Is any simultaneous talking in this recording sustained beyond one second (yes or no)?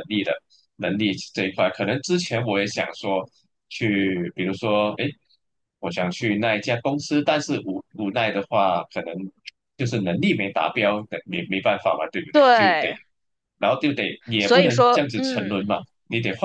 yes